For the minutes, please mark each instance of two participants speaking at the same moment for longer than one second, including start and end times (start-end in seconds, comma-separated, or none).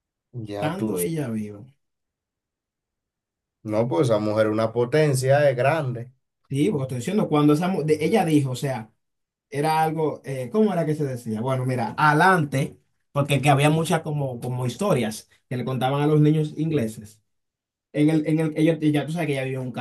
none